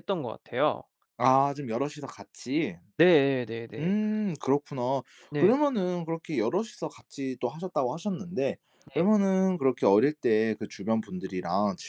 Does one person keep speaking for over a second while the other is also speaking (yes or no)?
no